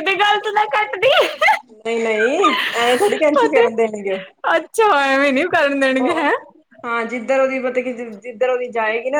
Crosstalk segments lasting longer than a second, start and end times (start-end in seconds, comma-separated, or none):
none